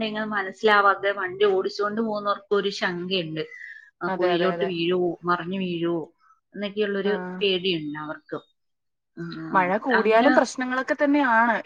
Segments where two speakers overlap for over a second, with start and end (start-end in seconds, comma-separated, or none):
none